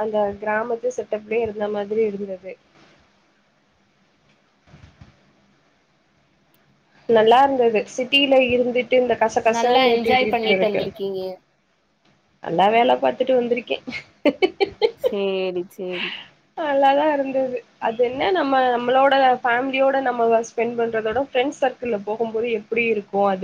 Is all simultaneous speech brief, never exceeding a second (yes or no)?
no